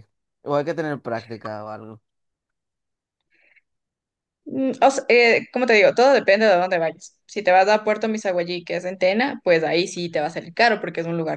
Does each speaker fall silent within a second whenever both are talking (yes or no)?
yes